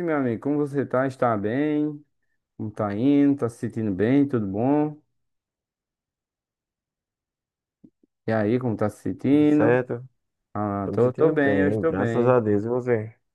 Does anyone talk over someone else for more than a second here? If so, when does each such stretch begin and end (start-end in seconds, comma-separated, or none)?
10.8-12.4